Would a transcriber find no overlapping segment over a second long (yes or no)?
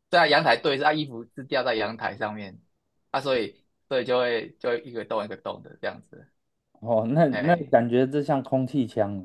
yes